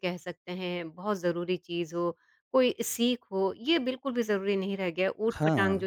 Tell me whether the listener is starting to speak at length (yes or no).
no